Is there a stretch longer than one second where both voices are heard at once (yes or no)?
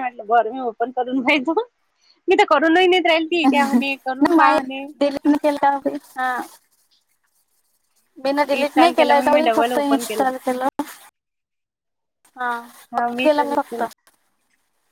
yes